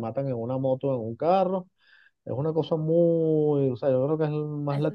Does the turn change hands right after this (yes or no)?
yes